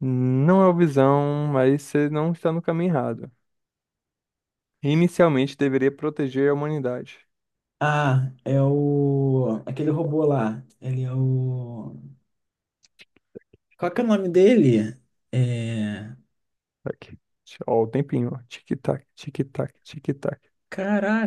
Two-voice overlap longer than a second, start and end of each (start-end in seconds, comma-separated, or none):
none